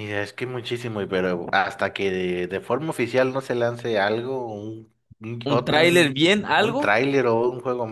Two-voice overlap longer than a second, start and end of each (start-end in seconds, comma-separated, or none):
5.4-6.9